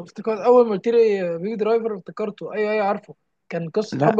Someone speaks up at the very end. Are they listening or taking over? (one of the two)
listening